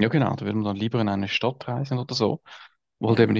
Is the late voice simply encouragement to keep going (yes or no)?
yes